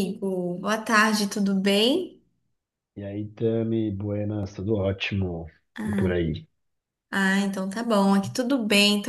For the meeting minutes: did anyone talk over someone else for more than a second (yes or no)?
no